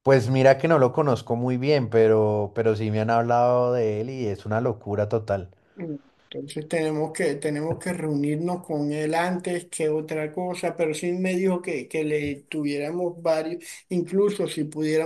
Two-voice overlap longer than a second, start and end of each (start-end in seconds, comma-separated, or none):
none